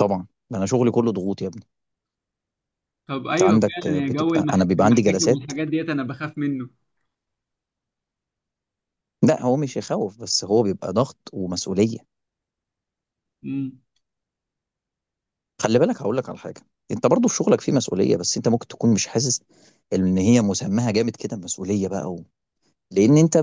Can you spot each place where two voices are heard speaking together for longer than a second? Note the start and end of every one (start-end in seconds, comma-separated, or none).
3.3-5.5